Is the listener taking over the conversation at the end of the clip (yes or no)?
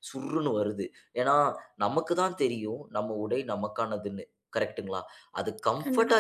no